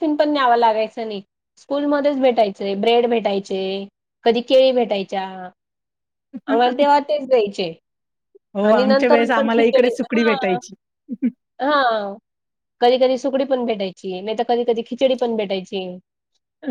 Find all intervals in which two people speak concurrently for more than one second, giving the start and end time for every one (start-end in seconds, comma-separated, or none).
8.7-10.6